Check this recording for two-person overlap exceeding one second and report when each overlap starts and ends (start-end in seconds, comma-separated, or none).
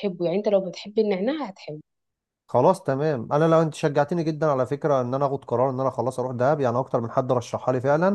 none